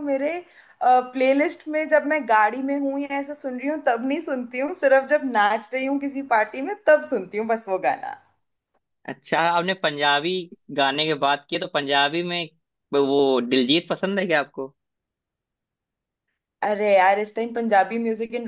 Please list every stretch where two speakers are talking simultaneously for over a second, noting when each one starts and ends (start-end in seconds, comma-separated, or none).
none